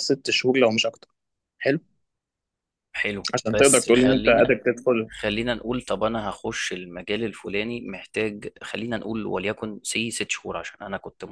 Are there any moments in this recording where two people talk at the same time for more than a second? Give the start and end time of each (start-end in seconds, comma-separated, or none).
3.3-4.5